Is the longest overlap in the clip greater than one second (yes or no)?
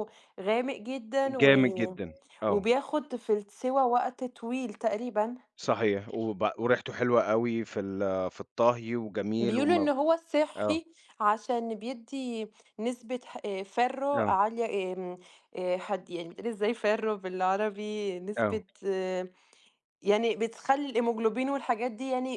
no